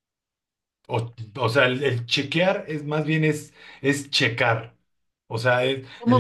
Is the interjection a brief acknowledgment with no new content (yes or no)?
yes